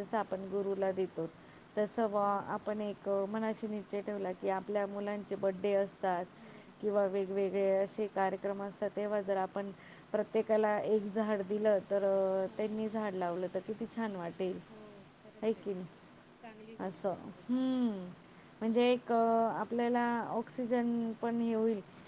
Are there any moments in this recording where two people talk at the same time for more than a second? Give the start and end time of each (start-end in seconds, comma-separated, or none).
none